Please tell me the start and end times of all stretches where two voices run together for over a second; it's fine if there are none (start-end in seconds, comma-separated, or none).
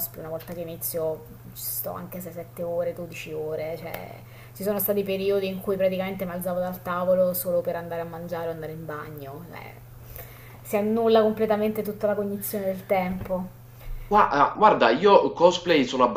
none